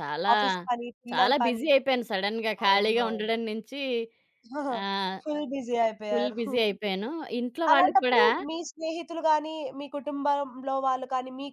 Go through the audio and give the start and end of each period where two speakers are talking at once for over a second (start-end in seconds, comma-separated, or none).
none